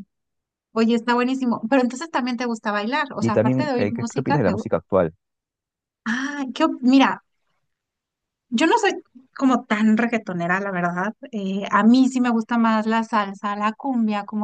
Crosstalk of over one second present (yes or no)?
yes